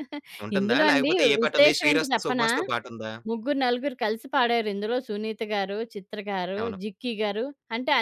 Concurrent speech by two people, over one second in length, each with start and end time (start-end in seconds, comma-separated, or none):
0.6-2.5